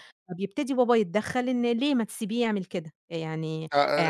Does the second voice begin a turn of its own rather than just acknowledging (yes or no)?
yes